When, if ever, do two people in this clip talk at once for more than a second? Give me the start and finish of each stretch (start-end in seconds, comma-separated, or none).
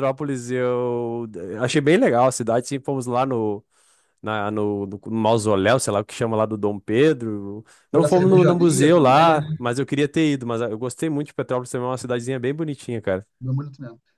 7.9-9.6